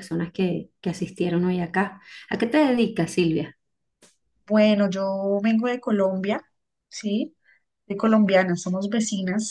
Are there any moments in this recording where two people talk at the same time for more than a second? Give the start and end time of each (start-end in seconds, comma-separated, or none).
none